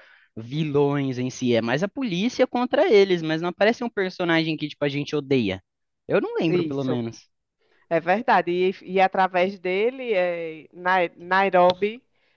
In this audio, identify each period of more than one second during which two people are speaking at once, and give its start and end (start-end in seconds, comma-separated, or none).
none